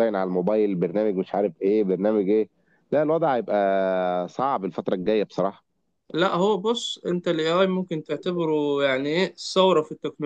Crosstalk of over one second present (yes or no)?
no